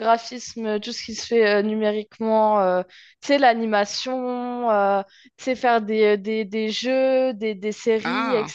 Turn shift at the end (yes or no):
no